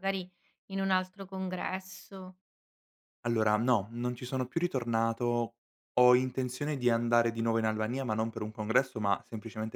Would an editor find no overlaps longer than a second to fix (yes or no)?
yes